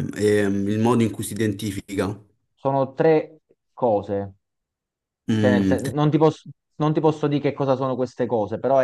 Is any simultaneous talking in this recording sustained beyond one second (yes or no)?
no